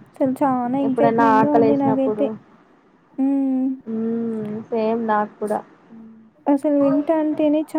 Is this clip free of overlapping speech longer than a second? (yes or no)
no